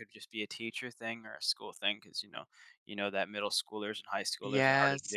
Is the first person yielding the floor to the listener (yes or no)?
no